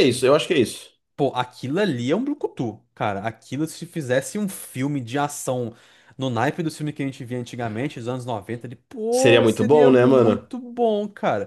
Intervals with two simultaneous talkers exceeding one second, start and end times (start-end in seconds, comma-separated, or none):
9.1-10.5